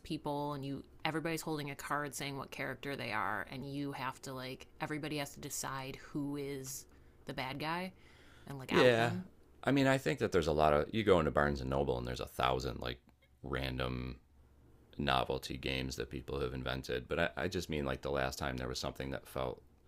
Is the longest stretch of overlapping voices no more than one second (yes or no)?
yes